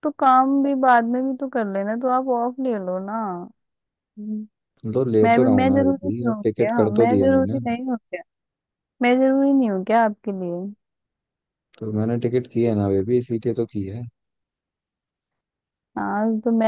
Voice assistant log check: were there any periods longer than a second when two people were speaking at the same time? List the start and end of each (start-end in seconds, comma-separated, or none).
5.2-7.6